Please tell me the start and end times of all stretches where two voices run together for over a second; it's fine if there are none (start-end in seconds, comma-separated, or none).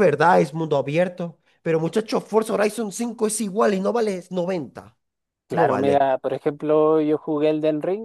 none